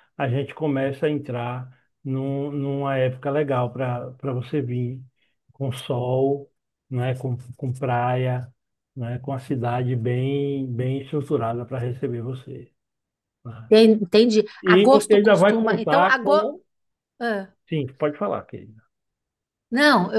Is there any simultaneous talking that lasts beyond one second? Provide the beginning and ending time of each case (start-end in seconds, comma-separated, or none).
14.6-16.5